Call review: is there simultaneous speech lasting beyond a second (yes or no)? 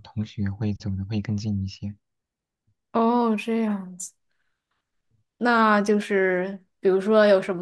no